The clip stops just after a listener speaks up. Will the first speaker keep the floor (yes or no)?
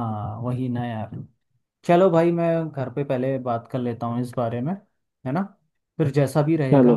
yes